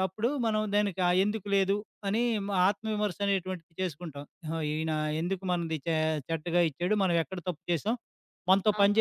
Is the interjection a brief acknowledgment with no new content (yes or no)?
no